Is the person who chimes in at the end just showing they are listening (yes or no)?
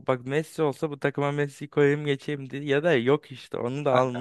no